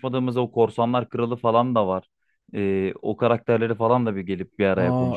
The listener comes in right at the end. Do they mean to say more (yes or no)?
yes